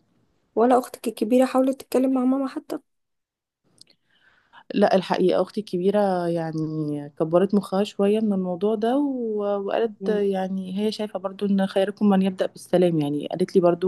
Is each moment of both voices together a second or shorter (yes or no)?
yes